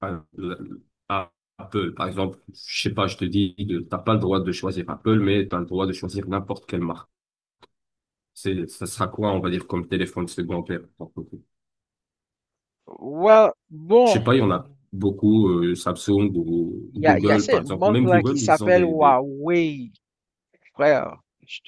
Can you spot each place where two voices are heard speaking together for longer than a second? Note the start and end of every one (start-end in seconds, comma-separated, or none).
17.0-19.2